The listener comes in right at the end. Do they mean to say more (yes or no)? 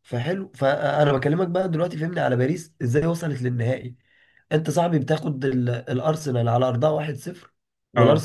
no